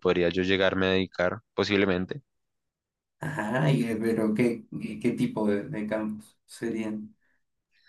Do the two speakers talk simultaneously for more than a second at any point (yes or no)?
no